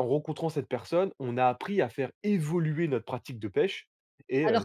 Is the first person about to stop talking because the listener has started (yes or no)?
yes